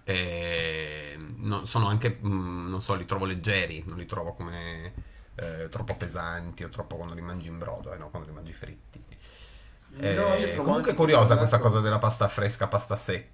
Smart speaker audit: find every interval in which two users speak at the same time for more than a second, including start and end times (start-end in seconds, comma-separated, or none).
10.2-11.8